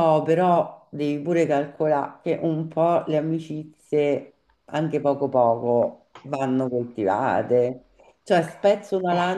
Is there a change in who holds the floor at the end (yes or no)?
no